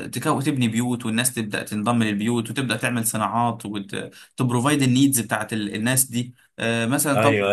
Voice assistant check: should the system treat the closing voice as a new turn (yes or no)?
no